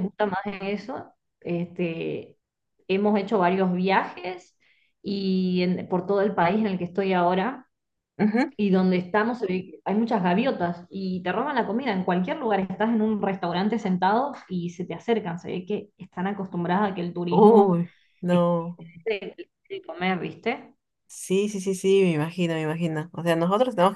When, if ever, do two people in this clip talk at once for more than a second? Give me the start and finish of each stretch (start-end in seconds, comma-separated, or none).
none